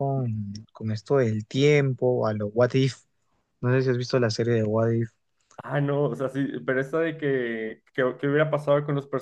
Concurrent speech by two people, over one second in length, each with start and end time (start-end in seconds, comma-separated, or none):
none